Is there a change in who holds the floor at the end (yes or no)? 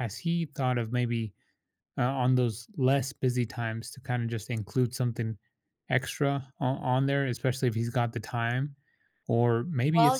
no